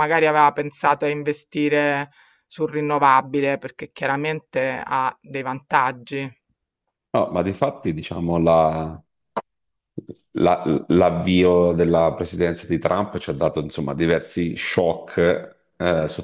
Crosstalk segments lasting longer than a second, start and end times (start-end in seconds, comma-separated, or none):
none